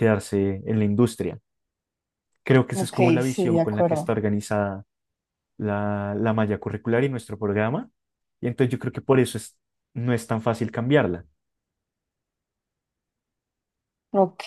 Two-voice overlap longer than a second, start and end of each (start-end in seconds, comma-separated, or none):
2.7-4.1